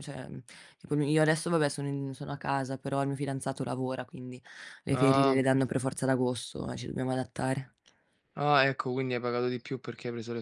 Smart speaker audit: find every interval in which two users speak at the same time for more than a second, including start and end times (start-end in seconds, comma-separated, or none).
none